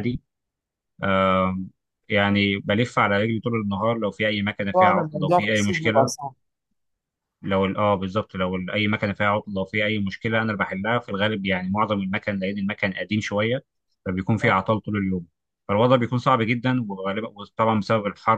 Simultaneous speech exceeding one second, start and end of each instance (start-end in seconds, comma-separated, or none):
4.7-6.2